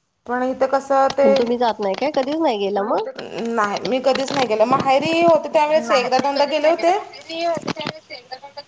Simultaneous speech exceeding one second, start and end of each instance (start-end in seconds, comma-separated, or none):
none